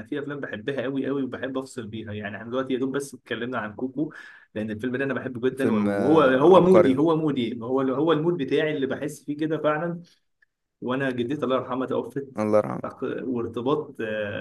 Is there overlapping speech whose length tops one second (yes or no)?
yes